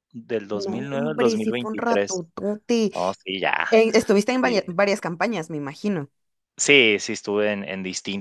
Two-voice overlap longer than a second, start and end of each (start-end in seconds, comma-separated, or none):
0.5-2.2